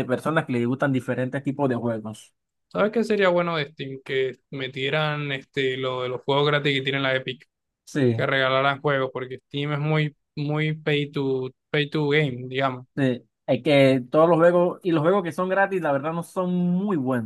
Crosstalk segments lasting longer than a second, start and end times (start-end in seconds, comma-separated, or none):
none